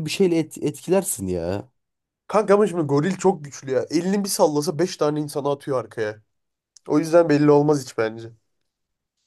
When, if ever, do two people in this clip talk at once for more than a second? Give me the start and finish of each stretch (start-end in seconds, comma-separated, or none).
none